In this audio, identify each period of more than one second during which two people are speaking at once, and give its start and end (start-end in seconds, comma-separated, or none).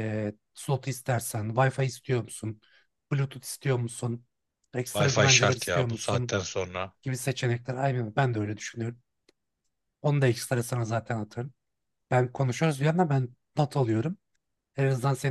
4.9-6.4